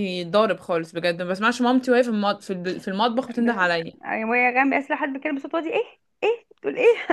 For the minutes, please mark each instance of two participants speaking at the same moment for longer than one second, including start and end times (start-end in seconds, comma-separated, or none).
none